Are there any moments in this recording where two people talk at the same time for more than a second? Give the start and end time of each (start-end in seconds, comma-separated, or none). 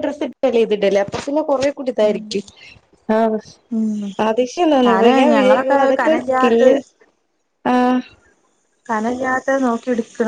4.9-6.7